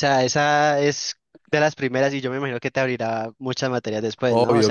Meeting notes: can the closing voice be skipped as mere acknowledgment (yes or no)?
no